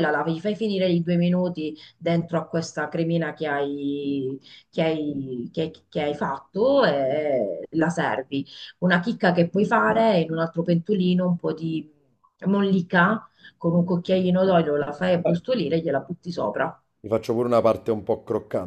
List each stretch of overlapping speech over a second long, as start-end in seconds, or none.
none